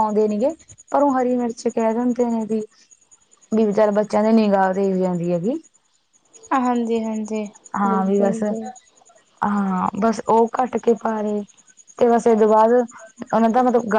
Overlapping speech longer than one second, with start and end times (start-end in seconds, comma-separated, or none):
none